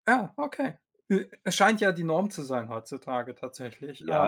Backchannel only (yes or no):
no